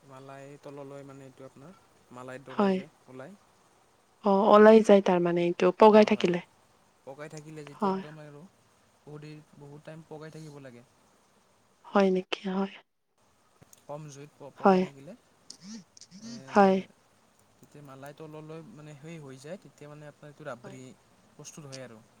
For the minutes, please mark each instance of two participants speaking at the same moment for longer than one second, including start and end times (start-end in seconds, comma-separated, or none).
none